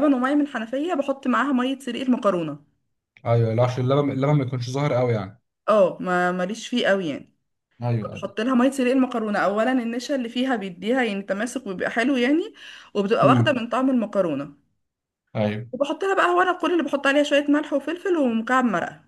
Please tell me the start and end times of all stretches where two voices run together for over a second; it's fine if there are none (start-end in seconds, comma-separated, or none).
none